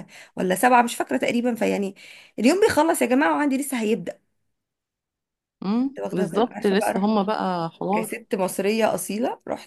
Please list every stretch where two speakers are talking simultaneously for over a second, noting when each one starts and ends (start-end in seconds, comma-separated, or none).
5.8-7.1